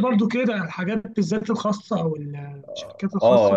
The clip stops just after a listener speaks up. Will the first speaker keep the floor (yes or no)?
no